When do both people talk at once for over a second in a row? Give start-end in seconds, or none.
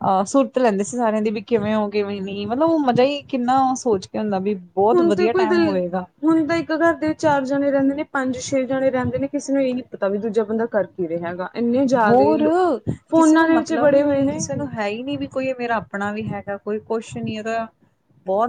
13.2-14.4